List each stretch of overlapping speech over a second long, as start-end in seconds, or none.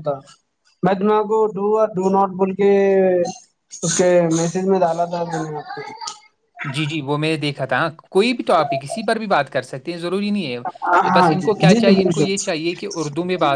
10.5-12.6